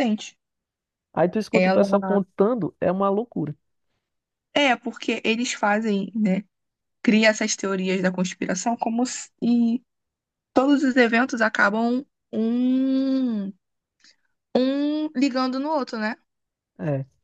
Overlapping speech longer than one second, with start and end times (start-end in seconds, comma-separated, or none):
none